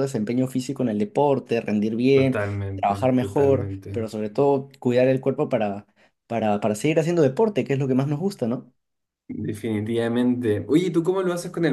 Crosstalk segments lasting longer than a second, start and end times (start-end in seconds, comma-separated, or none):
2.1-4.1